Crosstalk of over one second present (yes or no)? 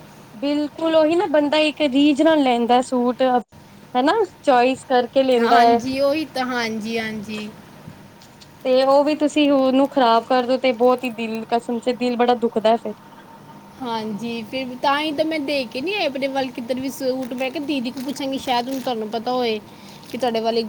no